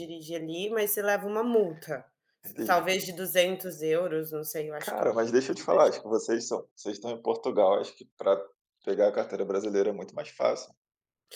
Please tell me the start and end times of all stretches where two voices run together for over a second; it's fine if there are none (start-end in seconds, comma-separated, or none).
4.8-6.1